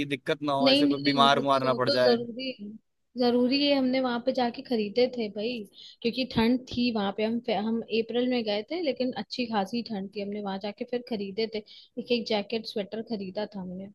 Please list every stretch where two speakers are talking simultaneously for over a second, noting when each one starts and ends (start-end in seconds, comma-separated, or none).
0.6-2.2